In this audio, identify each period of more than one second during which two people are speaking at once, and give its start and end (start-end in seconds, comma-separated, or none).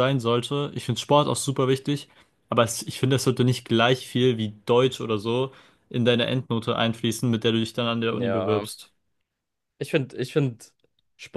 none